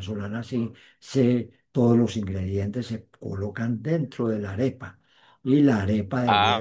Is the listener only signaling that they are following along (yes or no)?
yes